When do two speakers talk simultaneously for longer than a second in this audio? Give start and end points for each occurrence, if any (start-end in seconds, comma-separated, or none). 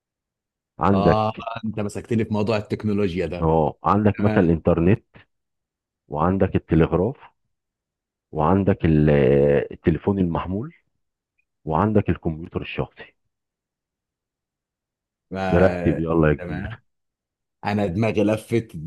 15.5-16.8